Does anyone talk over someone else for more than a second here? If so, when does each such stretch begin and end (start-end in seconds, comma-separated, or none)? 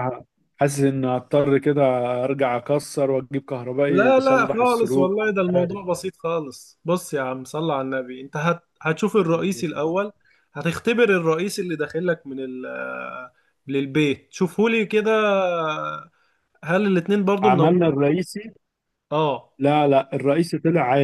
3.9-5.8